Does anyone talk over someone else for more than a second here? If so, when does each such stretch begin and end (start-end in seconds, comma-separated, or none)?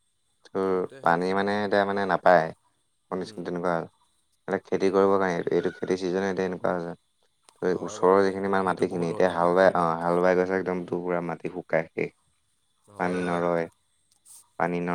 7.8-9.9